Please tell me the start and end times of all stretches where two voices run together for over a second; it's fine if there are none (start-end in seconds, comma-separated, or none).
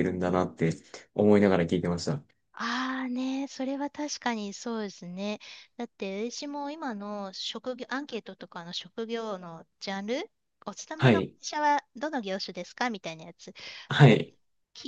none